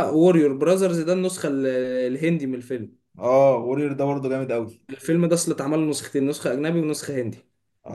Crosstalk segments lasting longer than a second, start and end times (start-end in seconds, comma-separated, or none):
none